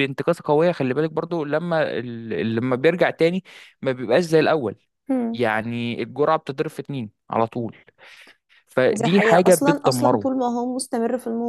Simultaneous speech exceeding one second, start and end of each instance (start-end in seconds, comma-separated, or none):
8.9-10.3